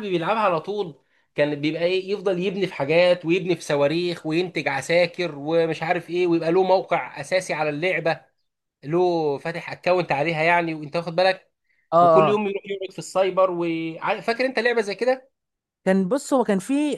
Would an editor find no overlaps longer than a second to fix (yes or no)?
yes